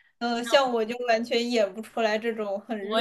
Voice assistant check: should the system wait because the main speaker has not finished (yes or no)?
no